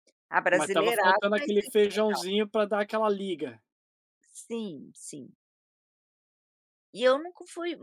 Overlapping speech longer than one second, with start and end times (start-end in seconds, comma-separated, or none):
0.5-2.2